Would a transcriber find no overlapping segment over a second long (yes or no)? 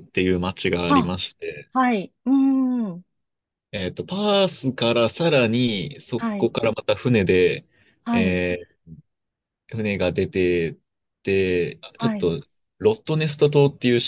yes